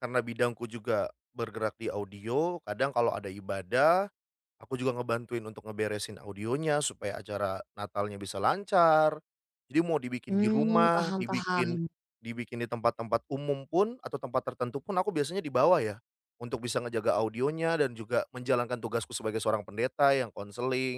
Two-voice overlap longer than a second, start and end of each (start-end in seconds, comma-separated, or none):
10.3-11.8